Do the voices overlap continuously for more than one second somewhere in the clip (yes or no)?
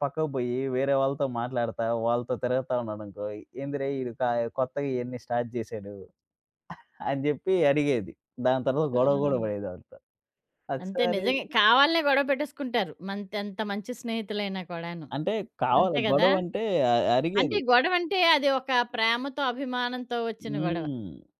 no